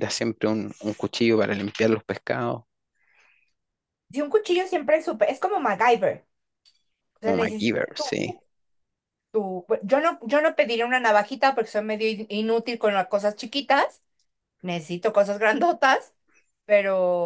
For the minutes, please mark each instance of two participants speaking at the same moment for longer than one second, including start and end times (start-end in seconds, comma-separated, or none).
7.2-8.4